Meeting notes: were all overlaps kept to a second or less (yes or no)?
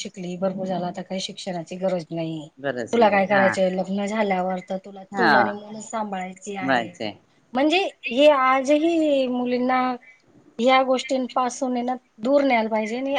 yes